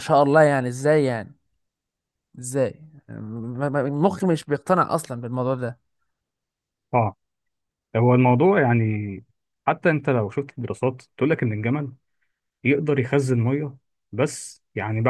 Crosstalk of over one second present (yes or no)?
no